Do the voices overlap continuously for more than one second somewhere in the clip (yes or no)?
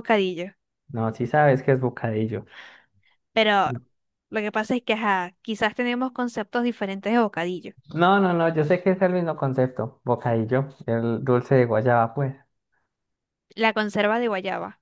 no